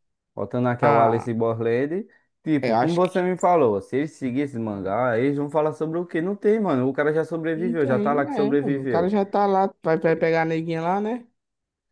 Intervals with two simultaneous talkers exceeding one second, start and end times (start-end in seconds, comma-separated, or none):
7.5-9.1